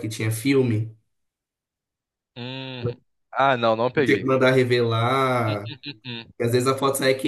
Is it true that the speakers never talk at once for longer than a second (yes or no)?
yes